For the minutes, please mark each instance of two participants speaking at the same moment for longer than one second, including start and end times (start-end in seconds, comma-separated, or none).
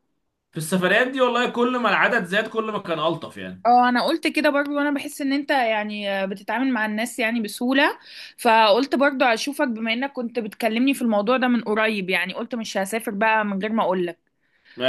none